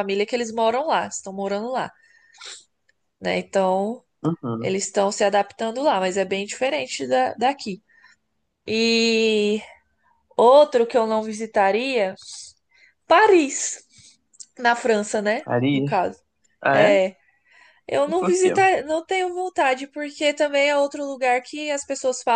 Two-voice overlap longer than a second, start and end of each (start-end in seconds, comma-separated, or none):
none